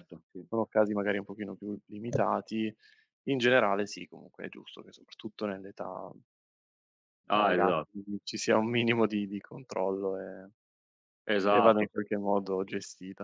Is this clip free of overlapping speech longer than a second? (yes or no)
yes